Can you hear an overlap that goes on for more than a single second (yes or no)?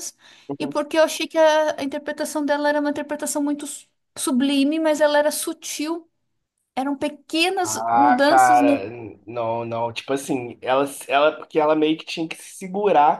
yes